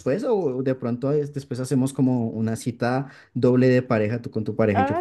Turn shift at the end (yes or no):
yes